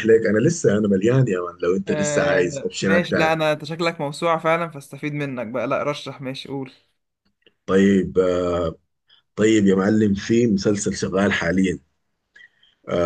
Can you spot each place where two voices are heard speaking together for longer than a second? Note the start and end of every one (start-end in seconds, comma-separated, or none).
1.9-3.4